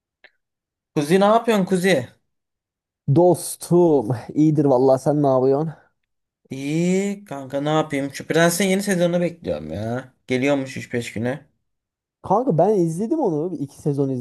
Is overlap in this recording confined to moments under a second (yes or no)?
yes